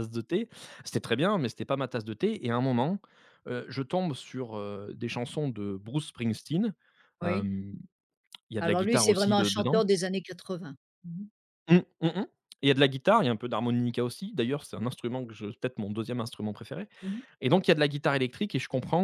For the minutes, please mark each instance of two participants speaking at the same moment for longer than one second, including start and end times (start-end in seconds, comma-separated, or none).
8.6-9.8